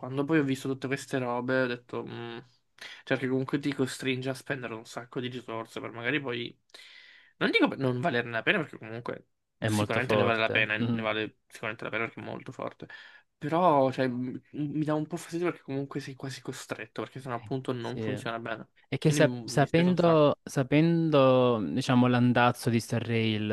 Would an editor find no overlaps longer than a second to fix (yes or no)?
no